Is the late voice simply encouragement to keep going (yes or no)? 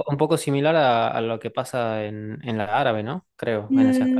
no